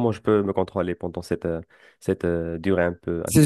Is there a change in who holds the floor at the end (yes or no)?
yes